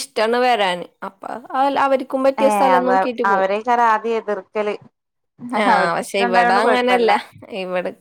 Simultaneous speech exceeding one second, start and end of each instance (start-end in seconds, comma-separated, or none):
5.7-7.1